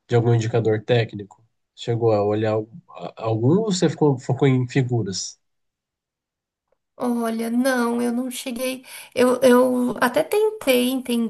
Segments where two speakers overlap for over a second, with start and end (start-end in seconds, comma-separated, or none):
none